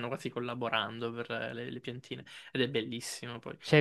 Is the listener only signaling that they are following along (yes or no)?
no